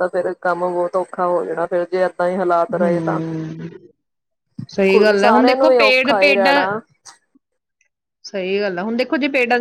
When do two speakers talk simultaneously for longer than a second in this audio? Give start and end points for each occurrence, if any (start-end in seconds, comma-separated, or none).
5.2-6.5